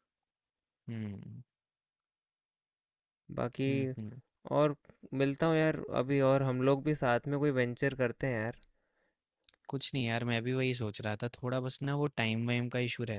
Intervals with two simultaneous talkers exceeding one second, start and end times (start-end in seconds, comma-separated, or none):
none